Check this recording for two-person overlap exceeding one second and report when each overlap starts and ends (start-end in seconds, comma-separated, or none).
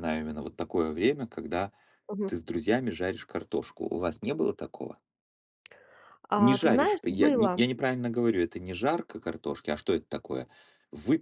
6.4-7.6